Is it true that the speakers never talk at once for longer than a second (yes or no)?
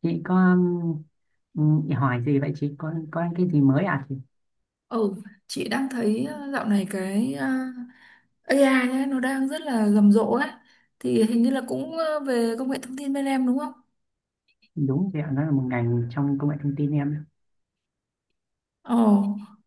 yes